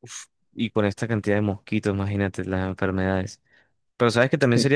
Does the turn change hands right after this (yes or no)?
no